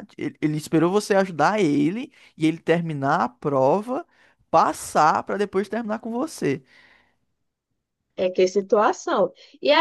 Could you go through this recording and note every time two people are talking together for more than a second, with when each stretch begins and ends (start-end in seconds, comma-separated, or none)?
none